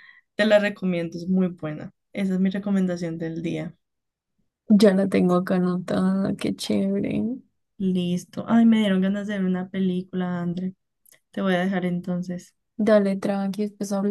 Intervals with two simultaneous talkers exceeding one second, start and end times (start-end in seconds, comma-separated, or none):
none